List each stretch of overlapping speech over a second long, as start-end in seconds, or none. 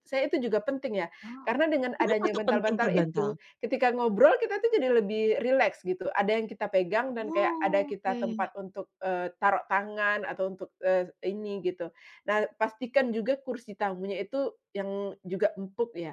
2.0-3.3, 7.2-8.5